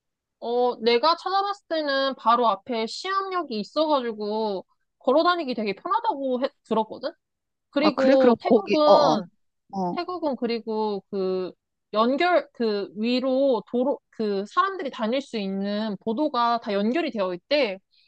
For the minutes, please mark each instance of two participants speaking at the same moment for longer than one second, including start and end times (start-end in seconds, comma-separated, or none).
7.8-9.2